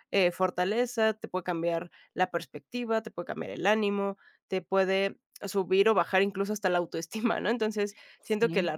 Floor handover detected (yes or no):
no